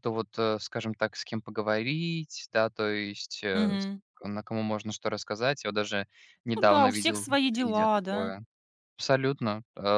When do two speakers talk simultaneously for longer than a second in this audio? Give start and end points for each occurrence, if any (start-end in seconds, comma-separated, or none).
6.5-8.3